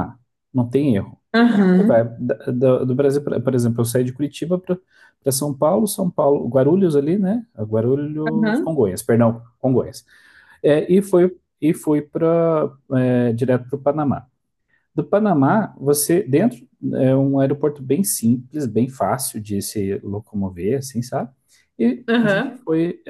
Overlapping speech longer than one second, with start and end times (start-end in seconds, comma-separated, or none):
none